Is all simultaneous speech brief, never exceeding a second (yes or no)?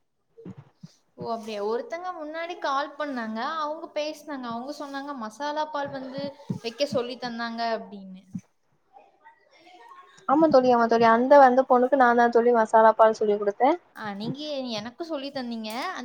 yes